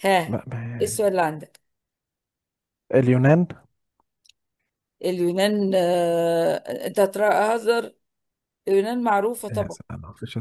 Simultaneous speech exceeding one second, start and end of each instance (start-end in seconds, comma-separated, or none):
none